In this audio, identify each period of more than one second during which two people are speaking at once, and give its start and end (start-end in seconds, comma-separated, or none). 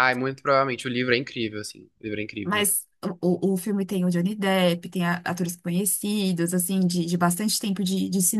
none